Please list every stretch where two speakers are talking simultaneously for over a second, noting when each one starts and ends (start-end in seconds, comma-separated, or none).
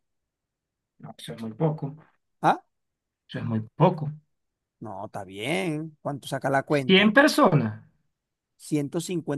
none